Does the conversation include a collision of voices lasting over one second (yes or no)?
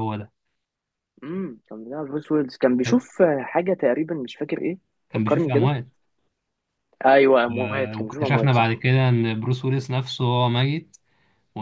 yes